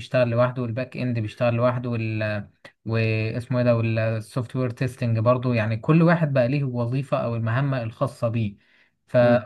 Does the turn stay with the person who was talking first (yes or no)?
yes